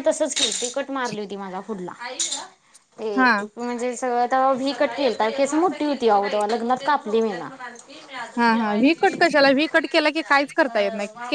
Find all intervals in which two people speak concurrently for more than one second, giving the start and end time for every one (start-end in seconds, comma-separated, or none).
none